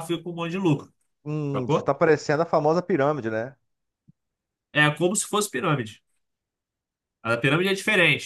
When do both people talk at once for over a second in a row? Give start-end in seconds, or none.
none